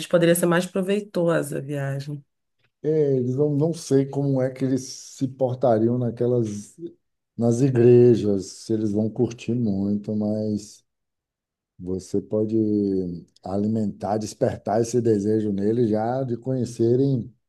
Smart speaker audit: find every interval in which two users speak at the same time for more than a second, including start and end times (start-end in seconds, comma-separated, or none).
none